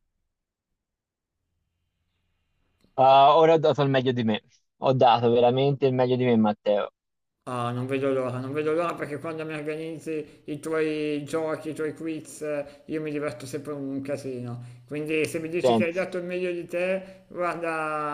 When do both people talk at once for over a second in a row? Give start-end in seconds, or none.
none